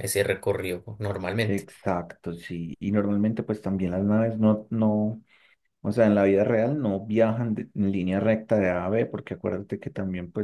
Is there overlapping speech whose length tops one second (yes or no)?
no